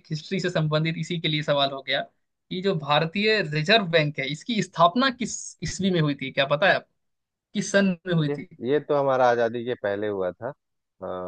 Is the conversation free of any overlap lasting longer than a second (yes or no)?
yes